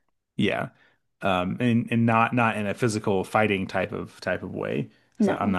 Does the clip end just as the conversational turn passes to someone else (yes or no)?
no